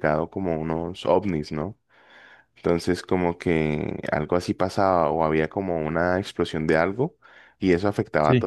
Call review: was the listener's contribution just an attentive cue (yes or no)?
yes